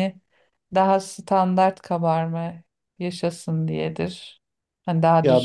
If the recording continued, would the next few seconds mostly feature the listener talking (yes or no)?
yes